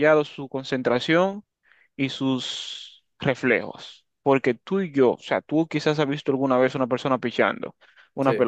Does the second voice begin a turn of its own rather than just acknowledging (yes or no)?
no